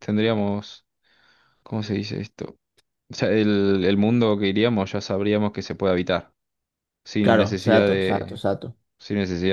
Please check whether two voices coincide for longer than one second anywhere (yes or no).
yes